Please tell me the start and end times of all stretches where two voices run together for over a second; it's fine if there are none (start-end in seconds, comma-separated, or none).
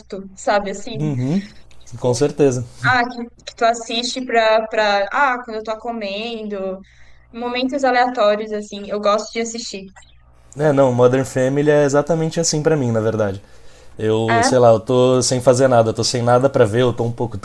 none